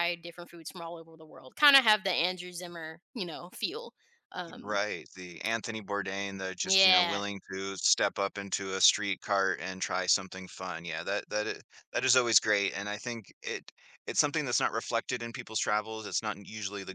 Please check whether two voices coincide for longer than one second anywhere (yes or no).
no